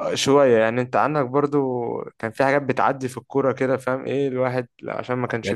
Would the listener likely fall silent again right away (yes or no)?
no